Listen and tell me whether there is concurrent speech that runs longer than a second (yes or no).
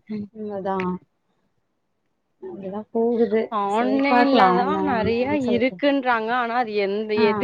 yes